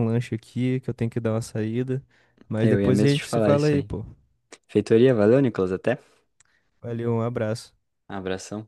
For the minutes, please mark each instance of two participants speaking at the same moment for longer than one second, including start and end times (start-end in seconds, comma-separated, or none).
2.6-3.9